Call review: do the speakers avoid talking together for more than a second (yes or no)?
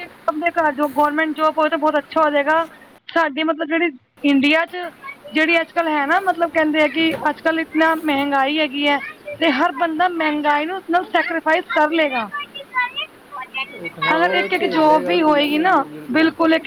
no